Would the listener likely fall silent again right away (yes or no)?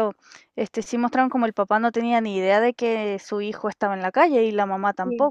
no